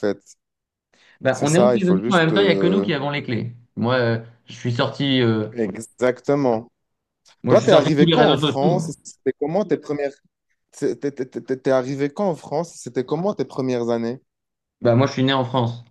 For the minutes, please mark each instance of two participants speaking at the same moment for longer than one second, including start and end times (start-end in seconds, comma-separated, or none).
1.3-2.9, 7.5-8.9